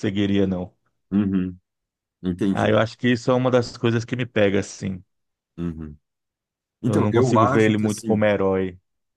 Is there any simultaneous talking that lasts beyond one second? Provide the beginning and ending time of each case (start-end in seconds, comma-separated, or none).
6.8-8.2